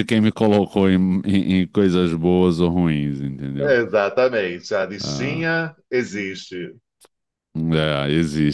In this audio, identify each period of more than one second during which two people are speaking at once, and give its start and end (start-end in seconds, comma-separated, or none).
none